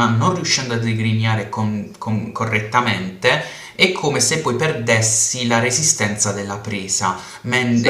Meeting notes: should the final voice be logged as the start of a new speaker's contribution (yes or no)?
no